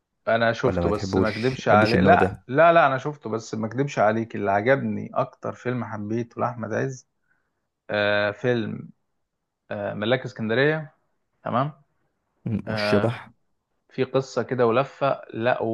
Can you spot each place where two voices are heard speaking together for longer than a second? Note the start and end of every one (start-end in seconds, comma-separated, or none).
0.6-2.4